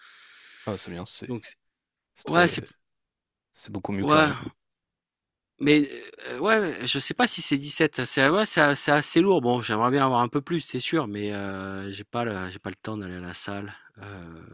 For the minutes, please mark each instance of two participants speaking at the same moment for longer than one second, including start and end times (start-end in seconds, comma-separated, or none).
none